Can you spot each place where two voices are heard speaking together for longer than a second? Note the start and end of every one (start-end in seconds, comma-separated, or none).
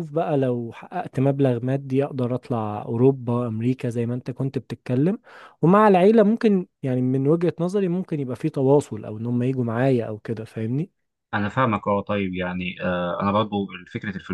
none